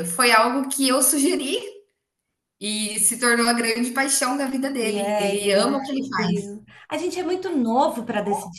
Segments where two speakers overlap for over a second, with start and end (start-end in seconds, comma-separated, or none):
4.8-6.5